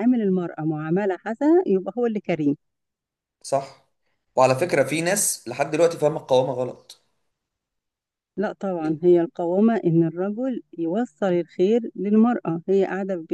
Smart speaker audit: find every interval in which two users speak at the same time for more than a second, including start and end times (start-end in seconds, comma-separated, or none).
none